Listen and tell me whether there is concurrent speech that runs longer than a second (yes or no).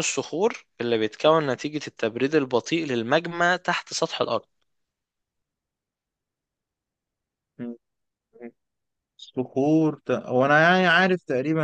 no